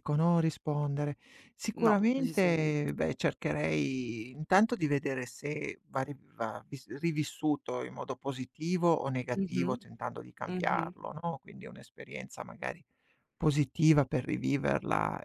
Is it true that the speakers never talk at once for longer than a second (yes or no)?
no